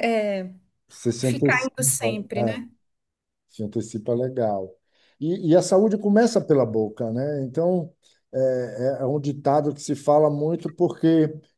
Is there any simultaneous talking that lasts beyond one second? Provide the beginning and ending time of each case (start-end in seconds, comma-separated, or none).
1.2-2.6